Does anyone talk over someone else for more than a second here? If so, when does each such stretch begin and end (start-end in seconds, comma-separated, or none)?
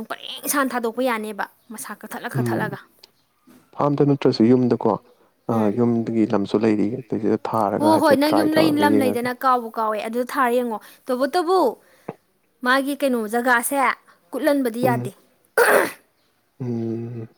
7.8-9.3